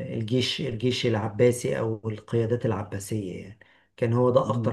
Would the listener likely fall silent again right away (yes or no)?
yes